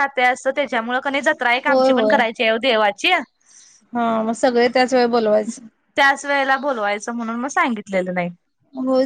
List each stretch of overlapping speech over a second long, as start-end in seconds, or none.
none